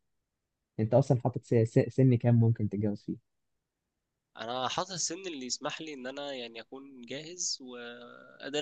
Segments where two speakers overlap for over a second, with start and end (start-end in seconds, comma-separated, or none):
none